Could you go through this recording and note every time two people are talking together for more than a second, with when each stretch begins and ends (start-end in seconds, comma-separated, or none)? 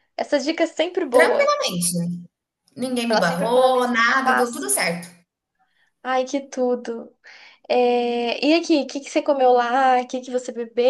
3.1-4.7